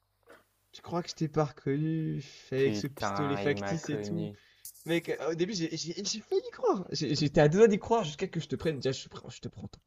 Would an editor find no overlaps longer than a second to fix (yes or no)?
no